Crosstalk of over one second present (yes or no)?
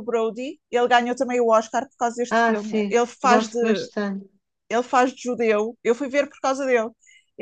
yes